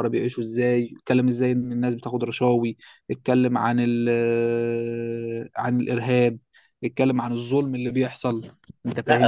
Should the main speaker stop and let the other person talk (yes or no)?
yes